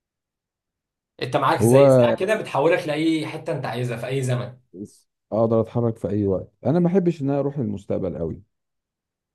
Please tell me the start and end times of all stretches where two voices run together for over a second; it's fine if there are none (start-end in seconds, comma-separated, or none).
none